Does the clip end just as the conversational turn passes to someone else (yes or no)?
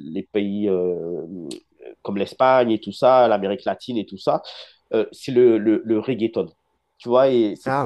no